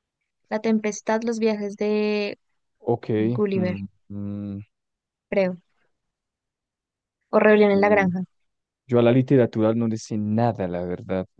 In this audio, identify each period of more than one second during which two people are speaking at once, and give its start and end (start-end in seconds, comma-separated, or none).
none